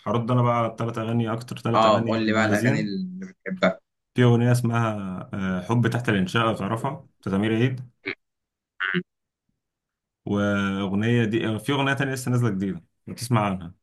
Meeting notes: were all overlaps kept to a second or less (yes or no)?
no